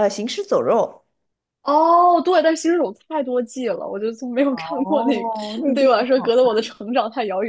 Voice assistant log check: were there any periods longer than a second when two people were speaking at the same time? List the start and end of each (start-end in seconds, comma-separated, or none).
4.5-6.4